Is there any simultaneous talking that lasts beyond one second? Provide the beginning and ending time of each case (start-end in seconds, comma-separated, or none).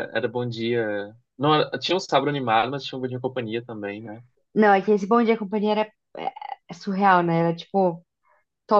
none